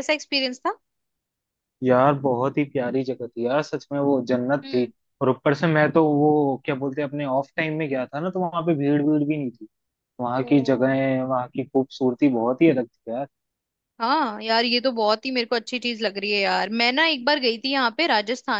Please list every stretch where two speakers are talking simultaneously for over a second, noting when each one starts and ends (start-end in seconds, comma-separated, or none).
none